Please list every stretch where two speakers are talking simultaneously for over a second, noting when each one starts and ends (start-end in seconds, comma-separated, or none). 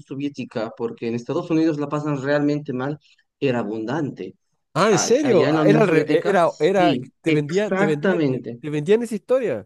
4.9-8.6